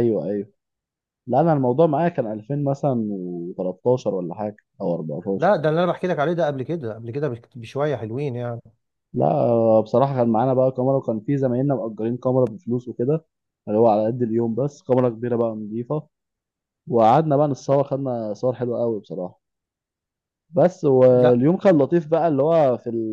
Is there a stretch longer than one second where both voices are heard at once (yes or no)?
no